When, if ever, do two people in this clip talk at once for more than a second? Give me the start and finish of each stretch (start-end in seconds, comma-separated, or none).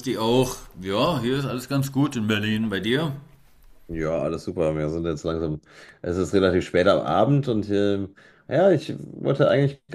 none